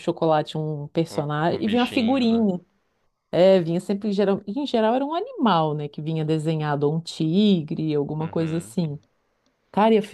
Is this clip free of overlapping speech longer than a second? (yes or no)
no